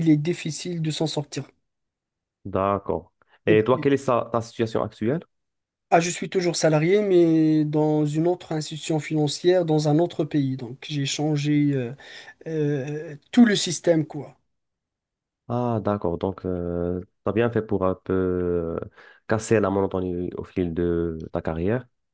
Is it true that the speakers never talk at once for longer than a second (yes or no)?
yes